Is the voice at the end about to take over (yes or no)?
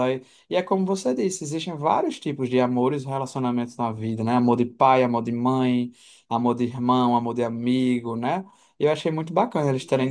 no